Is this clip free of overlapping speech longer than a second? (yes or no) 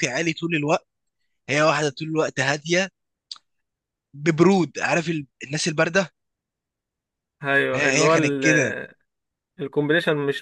yes